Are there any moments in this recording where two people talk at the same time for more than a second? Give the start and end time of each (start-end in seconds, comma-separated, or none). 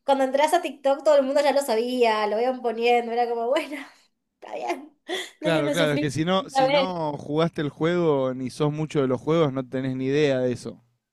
5.4-7.0